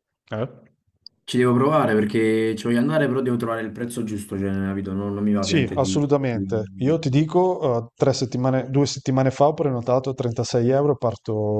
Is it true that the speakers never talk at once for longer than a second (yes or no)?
no